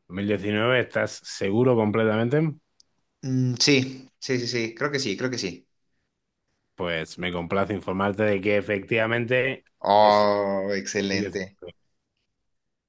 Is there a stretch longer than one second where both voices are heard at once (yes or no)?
yes